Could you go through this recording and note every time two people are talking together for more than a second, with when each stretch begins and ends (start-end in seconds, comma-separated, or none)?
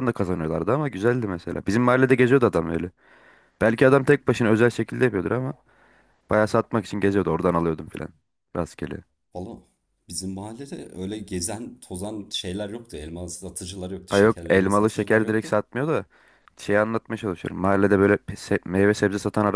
14.1-15.5